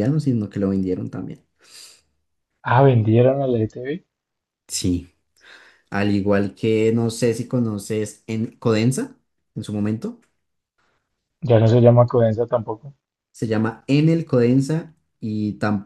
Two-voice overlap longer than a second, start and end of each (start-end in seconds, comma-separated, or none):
none